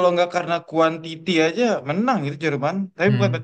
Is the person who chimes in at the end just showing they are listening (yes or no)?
yes